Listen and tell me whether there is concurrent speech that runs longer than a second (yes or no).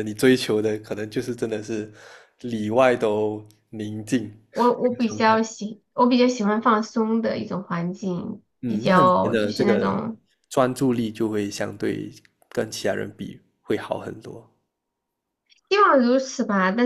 yes